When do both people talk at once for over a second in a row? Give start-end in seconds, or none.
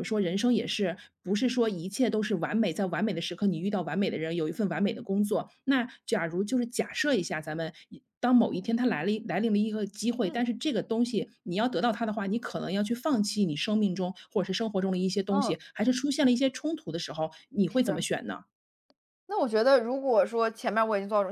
none